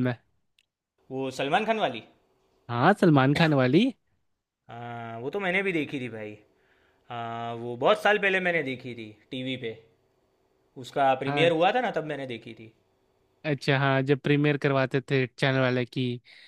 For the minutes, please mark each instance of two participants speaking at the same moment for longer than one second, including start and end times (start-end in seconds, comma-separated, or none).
none